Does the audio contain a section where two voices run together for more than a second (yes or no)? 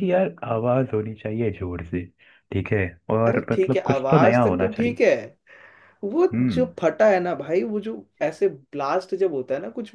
yes